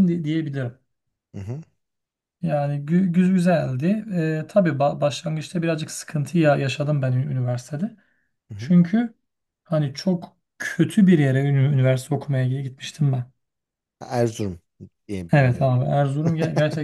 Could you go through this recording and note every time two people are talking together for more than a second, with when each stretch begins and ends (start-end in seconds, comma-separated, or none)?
none